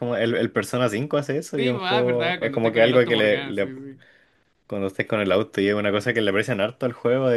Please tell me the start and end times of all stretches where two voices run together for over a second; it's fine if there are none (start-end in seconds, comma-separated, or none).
1.6-3.7